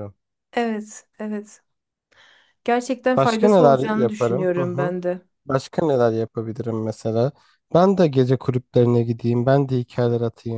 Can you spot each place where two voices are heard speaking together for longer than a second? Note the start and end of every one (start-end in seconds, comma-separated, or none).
3.1-4.9